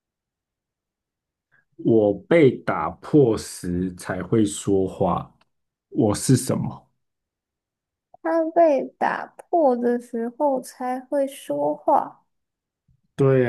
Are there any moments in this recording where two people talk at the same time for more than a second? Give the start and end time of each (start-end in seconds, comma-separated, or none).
none